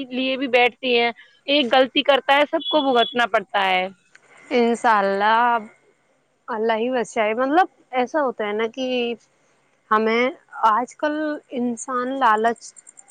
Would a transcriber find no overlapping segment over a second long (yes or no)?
yes